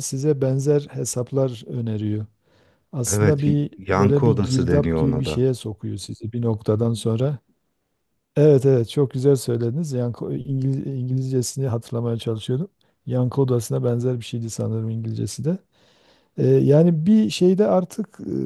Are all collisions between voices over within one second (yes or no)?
no